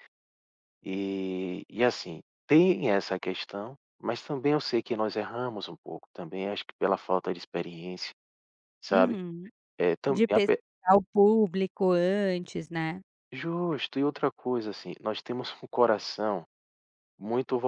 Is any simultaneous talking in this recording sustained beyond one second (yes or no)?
no